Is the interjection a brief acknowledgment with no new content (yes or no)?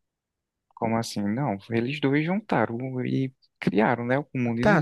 no